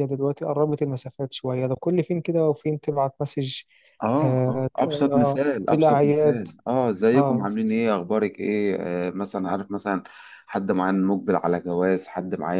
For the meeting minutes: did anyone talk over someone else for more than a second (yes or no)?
yes